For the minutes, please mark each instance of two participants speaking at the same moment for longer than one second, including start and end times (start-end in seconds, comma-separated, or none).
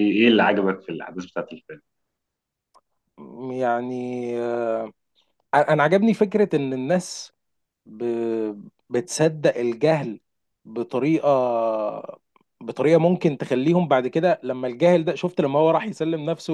none